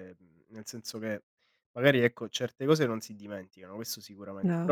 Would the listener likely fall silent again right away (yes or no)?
yes